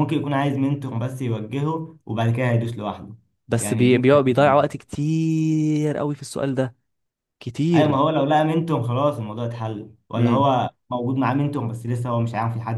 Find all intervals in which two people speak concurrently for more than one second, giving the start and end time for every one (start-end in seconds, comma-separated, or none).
3.6-4.8